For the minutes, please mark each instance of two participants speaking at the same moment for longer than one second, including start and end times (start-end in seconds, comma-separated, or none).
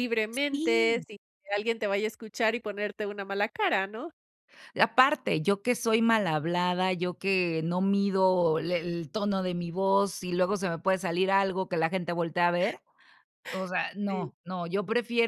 none